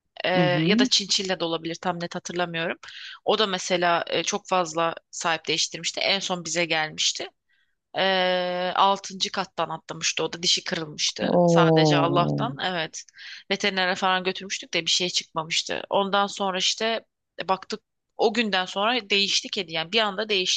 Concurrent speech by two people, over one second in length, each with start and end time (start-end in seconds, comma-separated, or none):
11.2-12.4